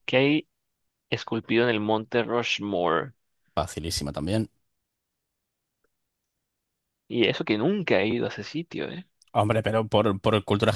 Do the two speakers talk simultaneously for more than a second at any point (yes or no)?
no